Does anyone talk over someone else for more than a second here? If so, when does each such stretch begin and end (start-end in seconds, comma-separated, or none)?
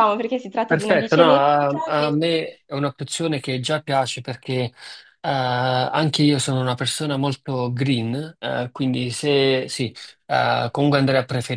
0.6-2.2